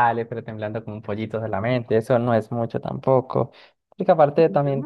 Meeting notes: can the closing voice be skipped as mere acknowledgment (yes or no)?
no